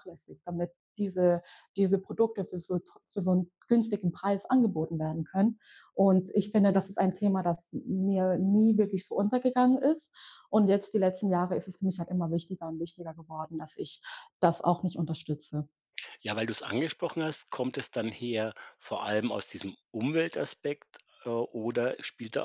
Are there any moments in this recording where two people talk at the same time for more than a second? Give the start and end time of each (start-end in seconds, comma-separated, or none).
none